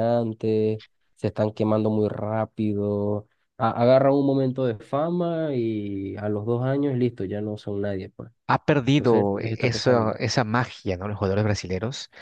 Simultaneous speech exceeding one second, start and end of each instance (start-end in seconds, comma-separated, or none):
8.9-10.1